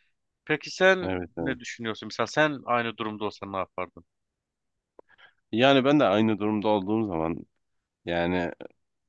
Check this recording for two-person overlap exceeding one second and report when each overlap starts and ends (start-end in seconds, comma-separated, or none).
none